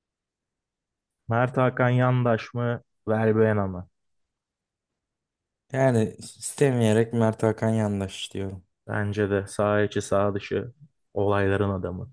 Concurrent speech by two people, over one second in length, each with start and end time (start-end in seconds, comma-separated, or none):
none